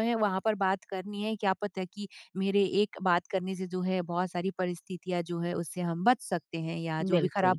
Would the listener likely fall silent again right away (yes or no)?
yes